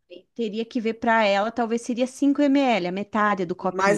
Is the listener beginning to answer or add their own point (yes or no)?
yes